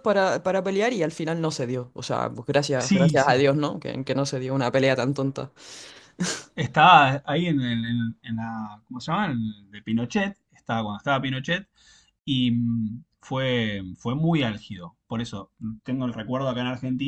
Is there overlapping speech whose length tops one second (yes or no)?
no